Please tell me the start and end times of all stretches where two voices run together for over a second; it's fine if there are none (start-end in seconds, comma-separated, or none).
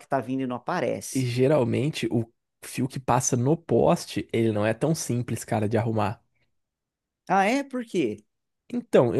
none